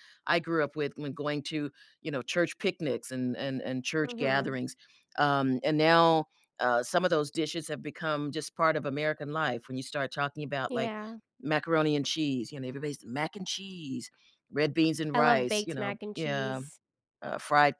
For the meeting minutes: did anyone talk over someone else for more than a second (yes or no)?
yes